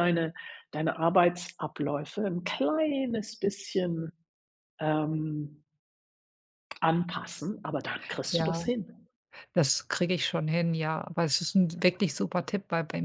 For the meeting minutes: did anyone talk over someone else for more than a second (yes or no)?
no